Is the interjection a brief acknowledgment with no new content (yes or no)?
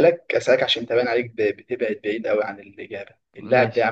yes